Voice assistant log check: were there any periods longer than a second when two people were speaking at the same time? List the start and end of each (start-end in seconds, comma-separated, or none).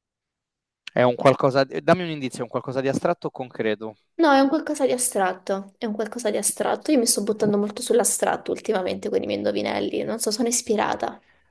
none